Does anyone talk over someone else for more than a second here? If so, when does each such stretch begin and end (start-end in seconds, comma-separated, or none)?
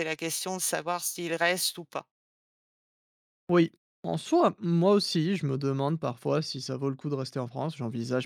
none